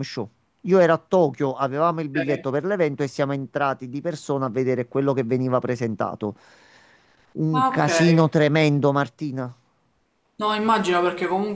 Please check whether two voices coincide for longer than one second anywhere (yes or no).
no